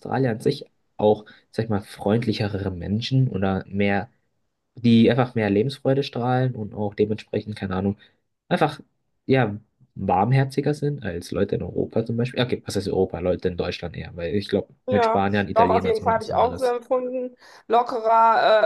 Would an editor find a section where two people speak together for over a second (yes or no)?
yes